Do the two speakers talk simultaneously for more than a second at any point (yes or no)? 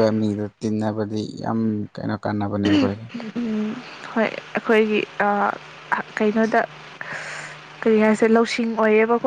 no